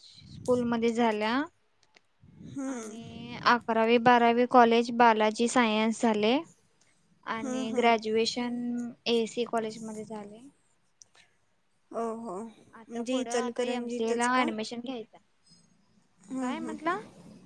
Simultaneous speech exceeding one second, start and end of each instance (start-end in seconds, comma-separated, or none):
12.8-14.5